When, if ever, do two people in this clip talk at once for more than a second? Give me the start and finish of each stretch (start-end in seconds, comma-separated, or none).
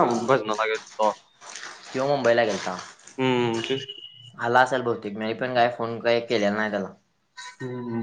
none